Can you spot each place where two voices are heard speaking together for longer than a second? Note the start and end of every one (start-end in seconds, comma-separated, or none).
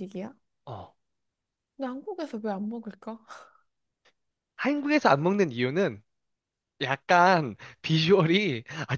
none